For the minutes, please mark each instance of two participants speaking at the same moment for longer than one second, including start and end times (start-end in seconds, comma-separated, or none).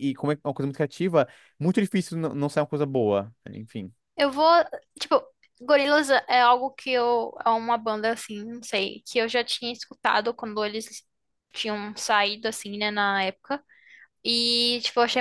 none